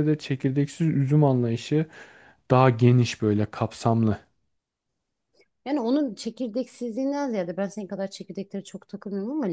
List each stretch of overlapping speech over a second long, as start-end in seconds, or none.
none